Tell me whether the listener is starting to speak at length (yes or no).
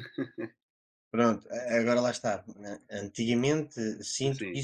no